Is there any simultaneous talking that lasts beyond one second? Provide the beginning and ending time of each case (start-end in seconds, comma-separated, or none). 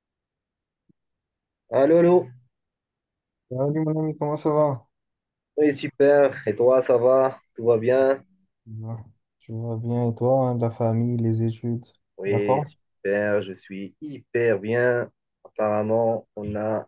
none